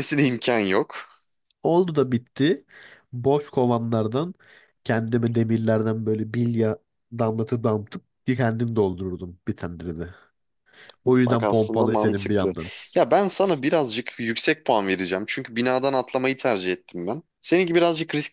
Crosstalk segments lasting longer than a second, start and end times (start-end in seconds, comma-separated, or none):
11.3-12.5